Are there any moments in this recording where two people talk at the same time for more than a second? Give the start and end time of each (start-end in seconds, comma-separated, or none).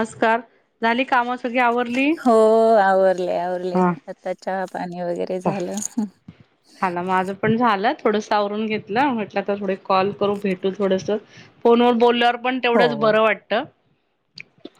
none